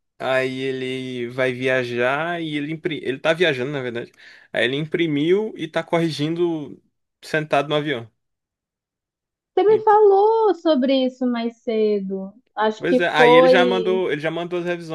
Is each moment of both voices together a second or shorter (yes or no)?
no